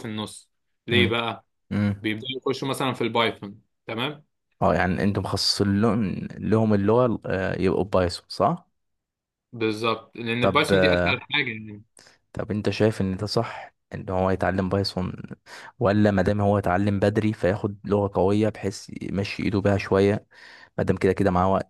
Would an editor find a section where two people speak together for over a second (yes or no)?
no